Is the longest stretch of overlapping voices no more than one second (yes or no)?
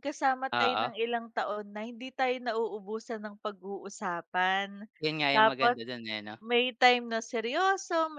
yes